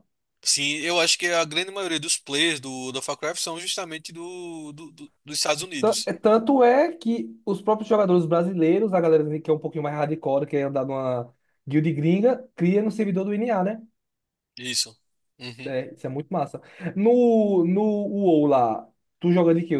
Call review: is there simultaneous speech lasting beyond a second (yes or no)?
no